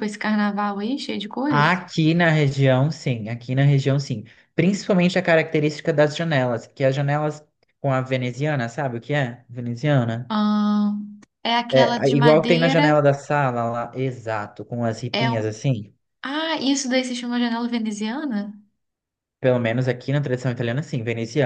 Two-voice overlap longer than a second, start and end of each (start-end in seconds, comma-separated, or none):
11.7-12.9